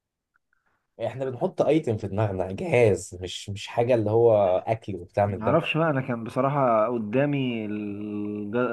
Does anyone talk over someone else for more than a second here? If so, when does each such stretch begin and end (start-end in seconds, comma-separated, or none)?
none